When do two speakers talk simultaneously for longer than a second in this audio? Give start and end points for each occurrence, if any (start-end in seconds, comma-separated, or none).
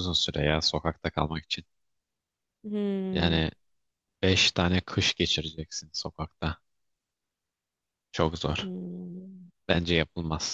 none